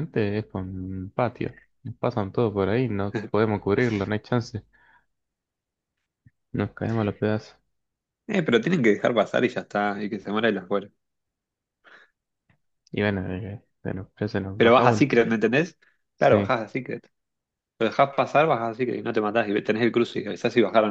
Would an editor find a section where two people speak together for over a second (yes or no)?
no